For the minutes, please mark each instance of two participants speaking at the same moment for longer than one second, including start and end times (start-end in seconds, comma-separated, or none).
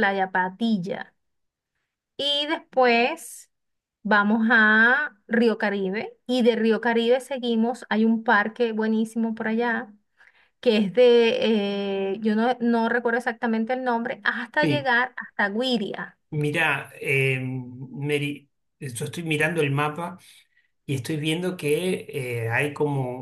none